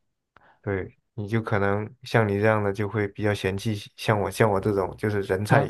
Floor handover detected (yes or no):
yes